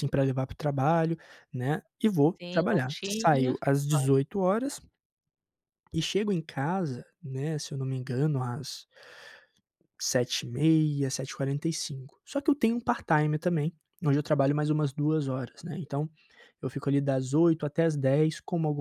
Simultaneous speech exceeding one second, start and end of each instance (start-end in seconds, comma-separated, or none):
2.4-4.1